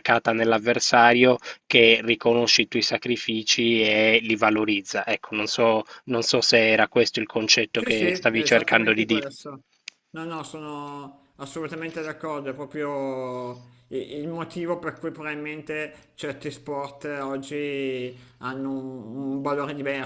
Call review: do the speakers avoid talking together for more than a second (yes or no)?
no